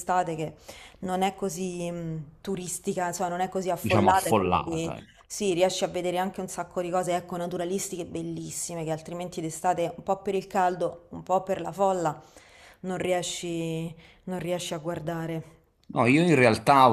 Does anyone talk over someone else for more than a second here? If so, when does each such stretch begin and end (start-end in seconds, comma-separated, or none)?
3.8-5.2